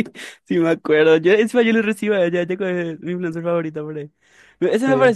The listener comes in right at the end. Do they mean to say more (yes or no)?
no